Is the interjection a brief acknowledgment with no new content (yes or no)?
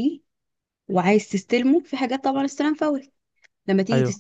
yes